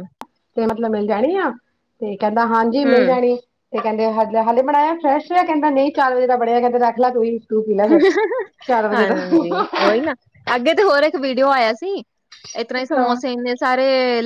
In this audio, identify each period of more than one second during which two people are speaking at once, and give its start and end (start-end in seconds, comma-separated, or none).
none